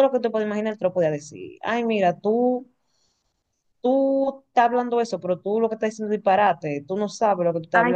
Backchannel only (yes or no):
no